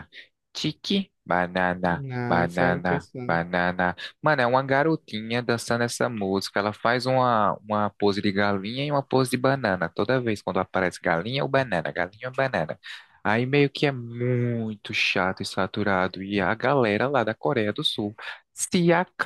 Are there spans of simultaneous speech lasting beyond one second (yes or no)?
yes